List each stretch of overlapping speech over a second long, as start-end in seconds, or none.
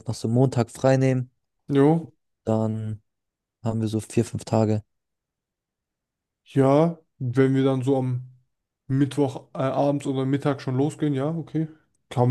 none